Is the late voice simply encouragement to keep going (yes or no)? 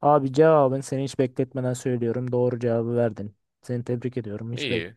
no